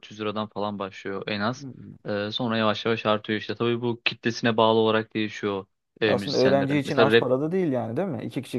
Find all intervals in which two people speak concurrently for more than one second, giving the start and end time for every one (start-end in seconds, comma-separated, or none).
6.0-7.3